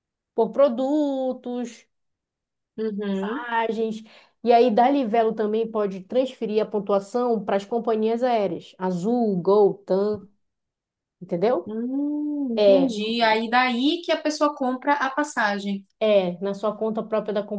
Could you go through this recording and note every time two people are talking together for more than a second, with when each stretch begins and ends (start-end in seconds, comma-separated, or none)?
none